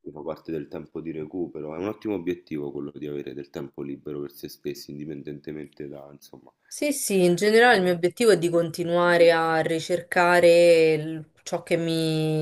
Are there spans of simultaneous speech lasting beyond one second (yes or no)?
no